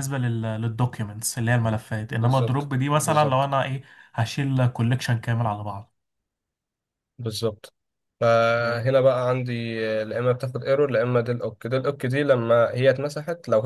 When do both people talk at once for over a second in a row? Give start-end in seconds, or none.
2.1-3.5